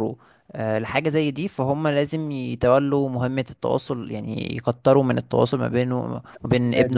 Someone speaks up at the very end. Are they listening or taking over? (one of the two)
listening